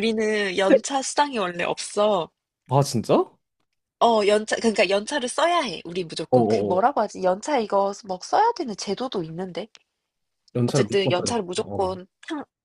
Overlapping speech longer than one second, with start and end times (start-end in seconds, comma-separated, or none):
10.7-12.0